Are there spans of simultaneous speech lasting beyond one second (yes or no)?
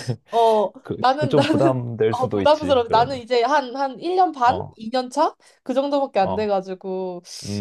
yes